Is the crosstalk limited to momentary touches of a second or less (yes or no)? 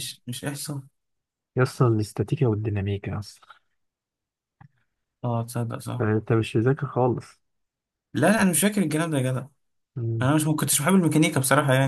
yes